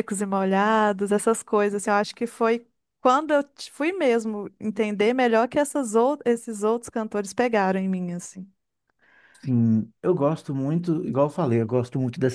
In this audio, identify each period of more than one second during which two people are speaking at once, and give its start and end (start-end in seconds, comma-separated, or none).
none